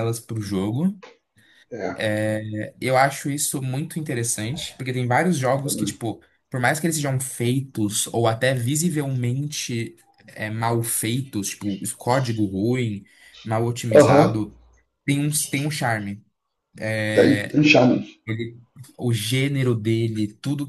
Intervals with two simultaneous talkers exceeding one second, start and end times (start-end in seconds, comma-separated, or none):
none